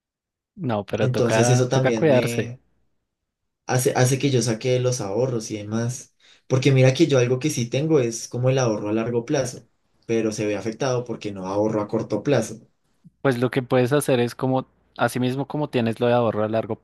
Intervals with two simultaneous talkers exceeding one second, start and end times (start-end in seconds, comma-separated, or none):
1.0-2.5